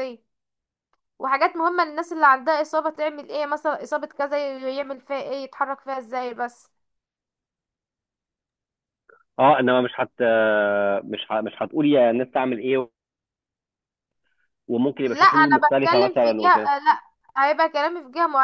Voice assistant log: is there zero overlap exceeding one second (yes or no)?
no